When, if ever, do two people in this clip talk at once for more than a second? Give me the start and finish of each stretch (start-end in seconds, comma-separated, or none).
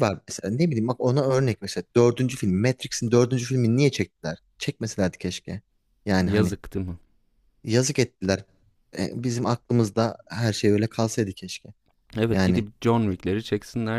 none